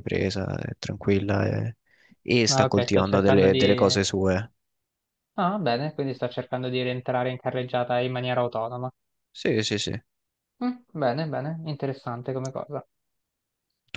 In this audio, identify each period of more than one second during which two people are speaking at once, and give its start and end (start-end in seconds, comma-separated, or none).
2.5-4.0